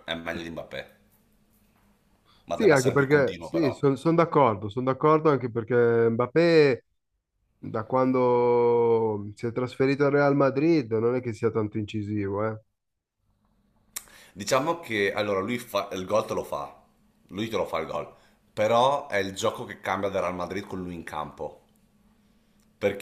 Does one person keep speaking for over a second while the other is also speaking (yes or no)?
yes